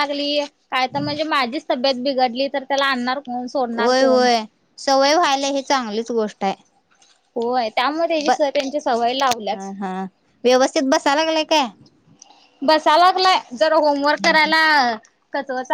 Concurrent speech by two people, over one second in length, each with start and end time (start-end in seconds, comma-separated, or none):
8.3-9.7